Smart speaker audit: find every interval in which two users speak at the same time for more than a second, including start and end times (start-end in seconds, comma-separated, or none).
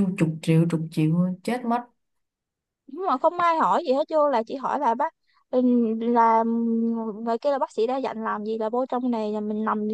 none